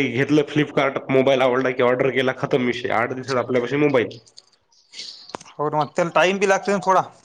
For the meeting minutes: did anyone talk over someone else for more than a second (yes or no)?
no